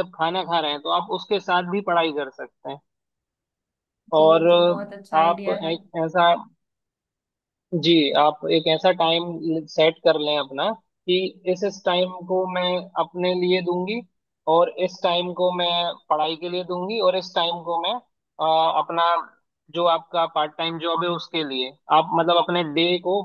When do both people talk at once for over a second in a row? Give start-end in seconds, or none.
4.2-5.7